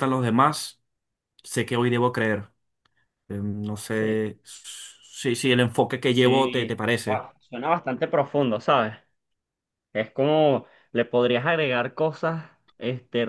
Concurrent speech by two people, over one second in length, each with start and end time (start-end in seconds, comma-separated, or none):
6.0-7.2